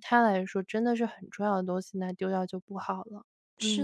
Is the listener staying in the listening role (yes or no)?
no